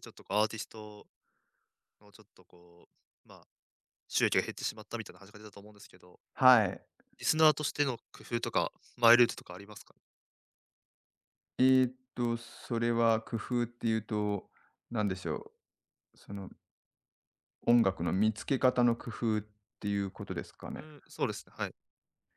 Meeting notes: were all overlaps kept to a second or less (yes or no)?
yes